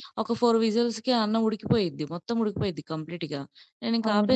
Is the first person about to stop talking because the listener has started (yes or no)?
yes